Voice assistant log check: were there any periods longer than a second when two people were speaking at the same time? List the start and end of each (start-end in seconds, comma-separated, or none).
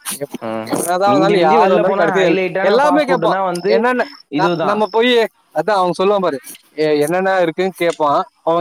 1.1-3.7